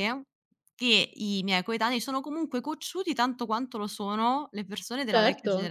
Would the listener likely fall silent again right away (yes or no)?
no